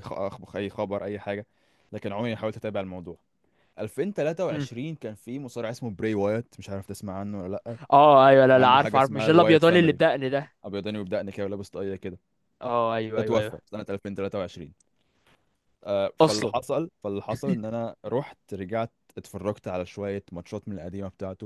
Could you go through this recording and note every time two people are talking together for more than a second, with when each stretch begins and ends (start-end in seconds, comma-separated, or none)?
8.5-10.0